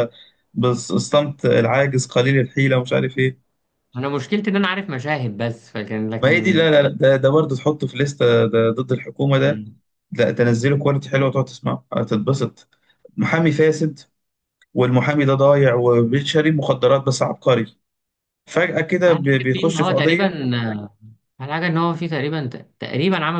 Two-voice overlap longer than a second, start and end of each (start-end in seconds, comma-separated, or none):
19.1-20.3